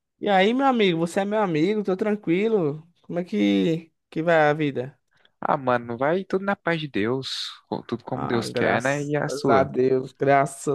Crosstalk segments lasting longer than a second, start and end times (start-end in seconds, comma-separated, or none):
8.1-9.7